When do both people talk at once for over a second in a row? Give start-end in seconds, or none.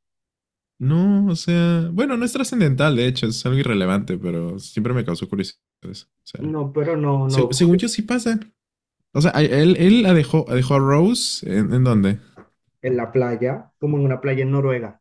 none